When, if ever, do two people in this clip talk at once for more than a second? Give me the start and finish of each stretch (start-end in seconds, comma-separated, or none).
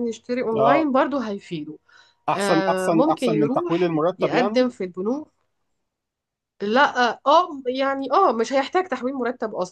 2.4-4.7